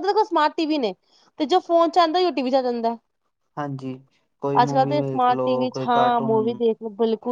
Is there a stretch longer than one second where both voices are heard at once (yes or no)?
yes